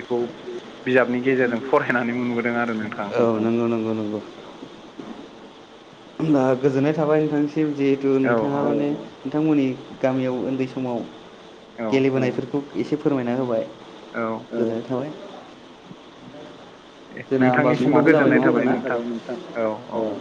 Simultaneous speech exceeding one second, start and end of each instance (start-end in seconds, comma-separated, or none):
17.4-19.0